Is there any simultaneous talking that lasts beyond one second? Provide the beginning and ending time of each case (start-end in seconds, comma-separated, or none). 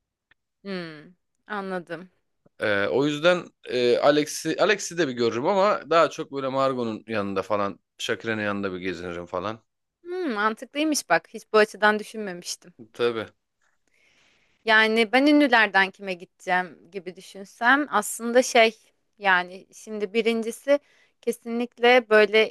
none